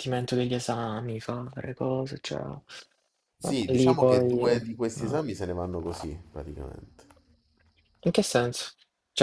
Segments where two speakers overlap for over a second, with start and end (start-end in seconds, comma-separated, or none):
3.4-4.7